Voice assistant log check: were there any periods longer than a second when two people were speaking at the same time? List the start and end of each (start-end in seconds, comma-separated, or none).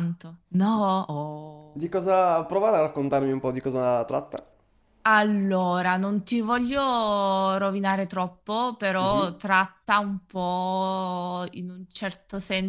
none